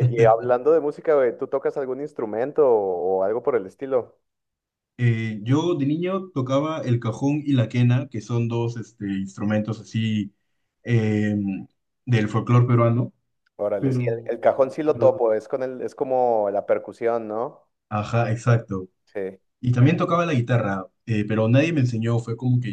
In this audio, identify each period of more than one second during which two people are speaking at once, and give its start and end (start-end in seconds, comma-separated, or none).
13.8-15.2